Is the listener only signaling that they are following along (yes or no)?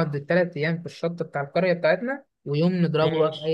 yes